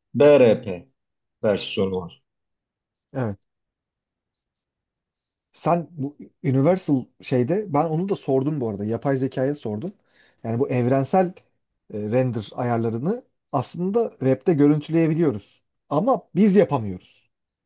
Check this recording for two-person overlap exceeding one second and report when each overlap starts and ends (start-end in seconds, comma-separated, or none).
none